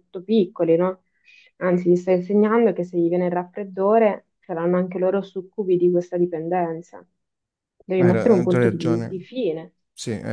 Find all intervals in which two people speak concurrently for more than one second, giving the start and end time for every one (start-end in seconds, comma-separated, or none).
8.0-9.2